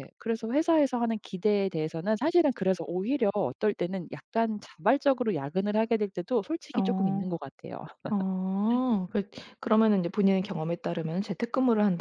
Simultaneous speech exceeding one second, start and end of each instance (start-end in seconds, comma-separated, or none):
none